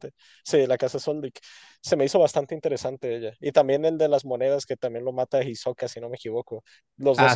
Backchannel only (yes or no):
yes